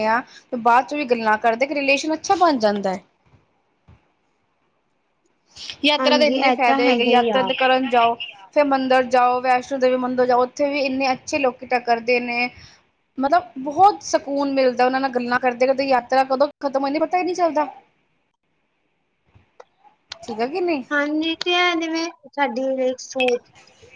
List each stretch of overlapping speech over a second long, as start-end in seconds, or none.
6.0-7.5